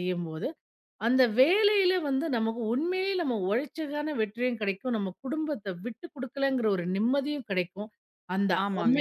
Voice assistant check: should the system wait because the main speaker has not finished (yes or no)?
yes